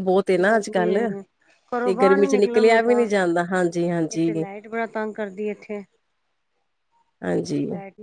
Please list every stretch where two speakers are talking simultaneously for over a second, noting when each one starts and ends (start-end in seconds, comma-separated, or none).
1.8-3.1